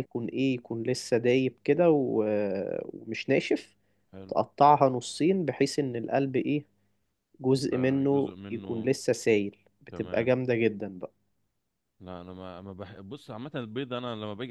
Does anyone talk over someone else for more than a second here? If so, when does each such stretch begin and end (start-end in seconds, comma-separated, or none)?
7.5-8.9